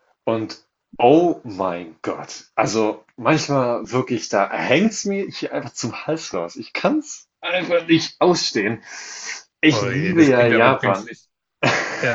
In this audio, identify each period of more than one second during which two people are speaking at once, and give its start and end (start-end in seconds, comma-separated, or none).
9.7-11.1